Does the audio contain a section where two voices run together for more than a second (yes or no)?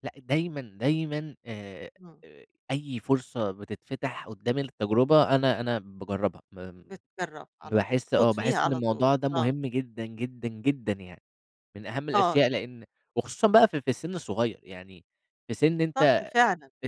yes